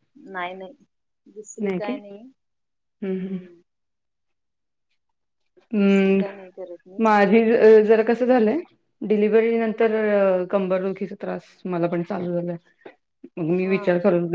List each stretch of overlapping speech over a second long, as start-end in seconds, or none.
none